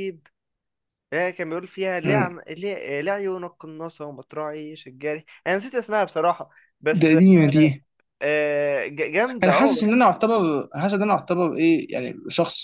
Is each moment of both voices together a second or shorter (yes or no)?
yes